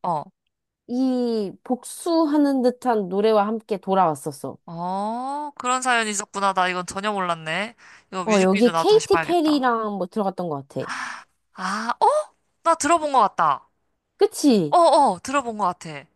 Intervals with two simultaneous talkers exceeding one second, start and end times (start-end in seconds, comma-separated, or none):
8.2-9.7